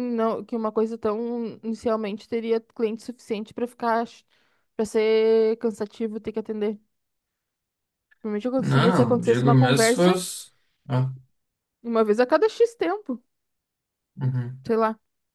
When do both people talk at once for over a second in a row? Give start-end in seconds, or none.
8.6-10.2